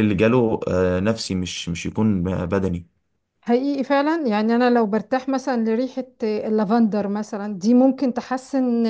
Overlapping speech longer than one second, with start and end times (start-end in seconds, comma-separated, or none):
none